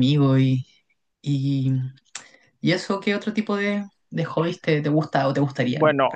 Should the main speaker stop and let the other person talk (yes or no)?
yes